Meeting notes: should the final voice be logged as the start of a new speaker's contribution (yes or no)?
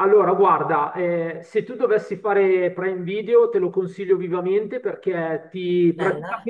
no